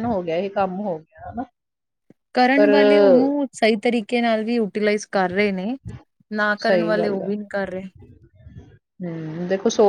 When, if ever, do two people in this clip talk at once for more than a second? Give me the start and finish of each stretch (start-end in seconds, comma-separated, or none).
none